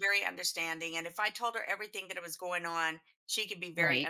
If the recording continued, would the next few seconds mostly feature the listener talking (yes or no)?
no